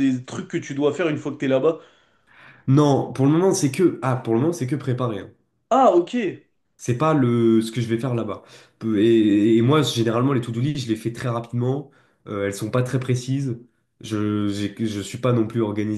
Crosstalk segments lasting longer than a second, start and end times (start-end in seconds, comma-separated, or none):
none